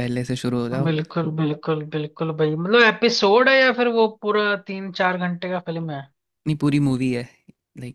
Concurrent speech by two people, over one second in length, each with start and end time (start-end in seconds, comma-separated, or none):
none